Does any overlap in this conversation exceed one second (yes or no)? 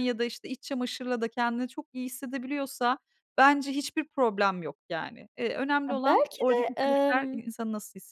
yes